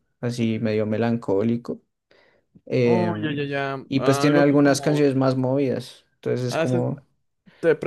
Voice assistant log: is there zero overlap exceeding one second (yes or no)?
no